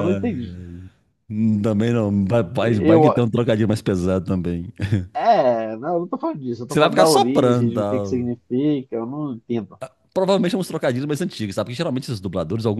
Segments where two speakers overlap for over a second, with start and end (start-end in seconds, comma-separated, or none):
6.7-8.3